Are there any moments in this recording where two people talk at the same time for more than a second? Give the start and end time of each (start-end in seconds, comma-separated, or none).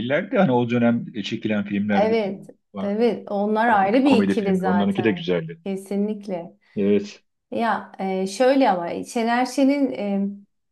3.7-5.3